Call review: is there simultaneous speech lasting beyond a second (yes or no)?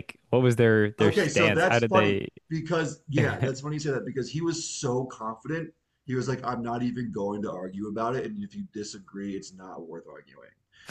yes